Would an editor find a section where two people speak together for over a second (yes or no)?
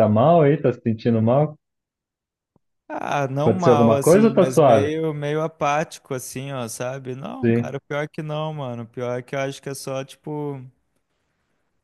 yes